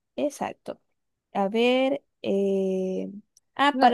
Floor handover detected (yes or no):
no